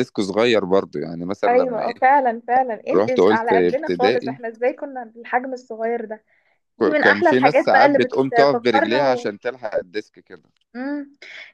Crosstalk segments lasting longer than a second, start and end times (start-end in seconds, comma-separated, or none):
2.9-4.4, 6.8-9.3